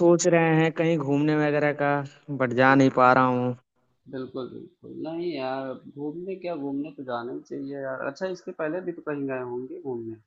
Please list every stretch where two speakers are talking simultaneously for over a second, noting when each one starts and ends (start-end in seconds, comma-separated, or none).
none